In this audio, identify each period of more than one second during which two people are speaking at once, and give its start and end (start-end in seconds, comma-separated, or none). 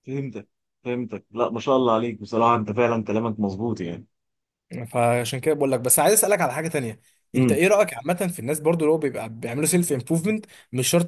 none